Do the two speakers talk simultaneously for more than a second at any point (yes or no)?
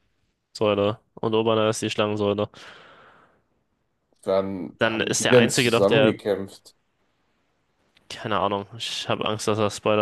yes